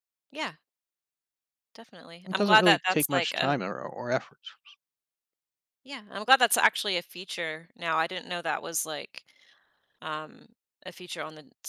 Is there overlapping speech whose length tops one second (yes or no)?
yes